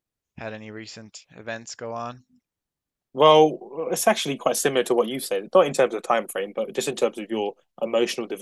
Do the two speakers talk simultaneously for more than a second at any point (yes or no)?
no